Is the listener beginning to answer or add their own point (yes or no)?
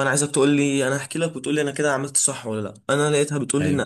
no